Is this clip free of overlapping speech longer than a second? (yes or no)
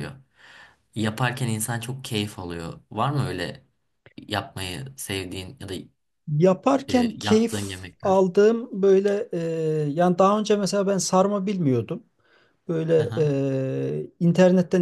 no